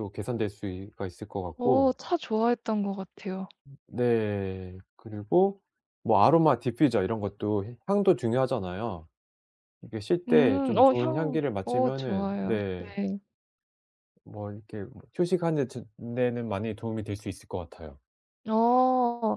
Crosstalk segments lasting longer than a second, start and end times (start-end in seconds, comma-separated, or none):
10.3-12.9